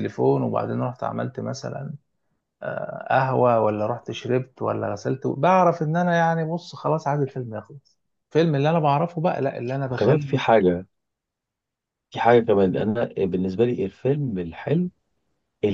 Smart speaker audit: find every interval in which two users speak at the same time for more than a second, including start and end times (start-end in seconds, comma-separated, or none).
none